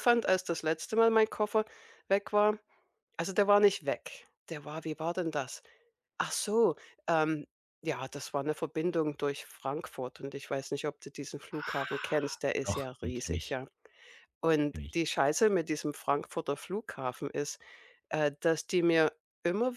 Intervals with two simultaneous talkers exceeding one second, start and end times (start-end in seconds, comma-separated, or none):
11.5-13.6